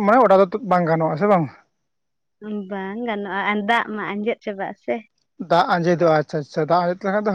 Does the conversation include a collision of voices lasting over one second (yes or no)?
no